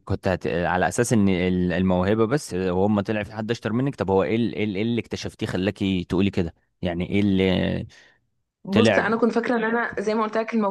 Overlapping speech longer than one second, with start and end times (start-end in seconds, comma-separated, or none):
none